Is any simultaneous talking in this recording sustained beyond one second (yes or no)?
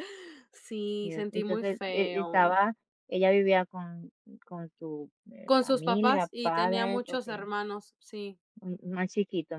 yes